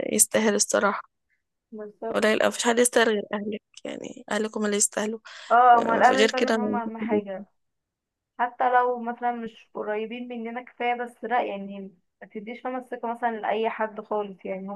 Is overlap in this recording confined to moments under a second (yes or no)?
no